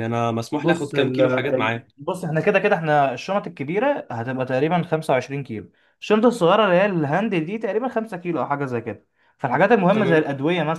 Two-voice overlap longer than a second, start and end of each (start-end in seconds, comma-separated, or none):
0.5-1.9